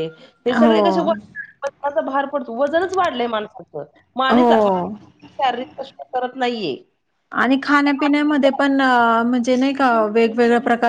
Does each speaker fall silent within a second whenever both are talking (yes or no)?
yes